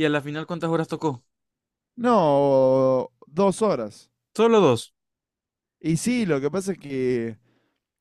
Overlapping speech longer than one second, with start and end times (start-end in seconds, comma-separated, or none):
none